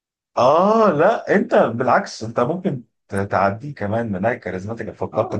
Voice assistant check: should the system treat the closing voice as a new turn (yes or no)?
yes